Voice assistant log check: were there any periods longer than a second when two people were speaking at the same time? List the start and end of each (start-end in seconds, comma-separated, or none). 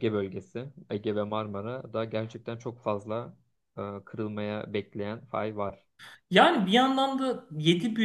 none